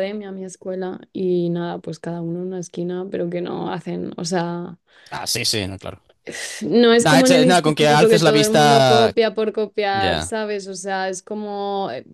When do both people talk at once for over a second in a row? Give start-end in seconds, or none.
7.0-9.1